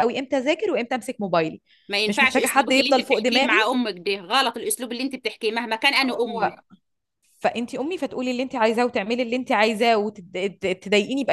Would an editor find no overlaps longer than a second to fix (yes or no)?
no